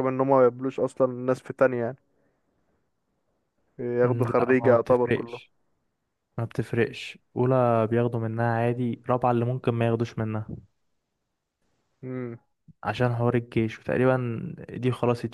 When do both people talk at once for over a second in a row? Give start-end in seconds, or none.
4.0-5.4